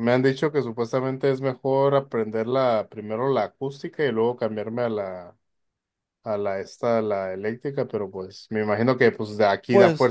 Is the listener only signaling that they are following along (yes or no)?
yes